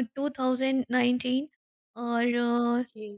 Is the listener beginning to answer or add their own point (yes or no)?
no